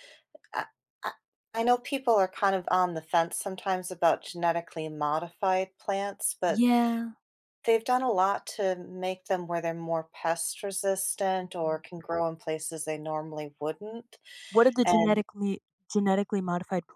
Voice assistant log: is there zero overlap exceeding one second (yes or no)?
yes